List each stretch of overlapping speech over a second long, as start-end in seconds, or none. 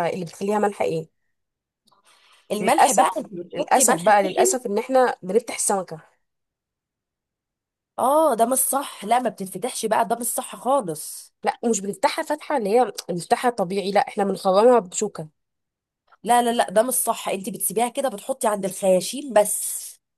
2.6-4.6